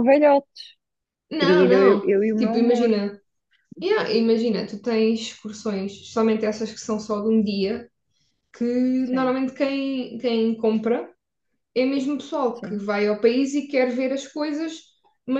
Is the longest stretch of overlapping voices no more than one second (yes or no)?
no